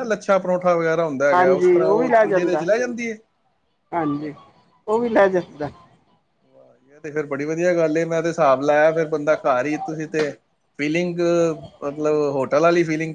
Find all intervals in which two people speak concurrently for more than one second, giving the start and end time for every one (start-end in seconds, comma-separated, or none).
1.3-2.6